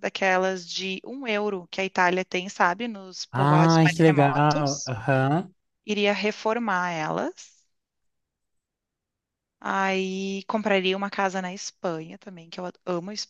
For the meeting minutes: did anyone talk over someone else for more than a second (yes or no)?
yes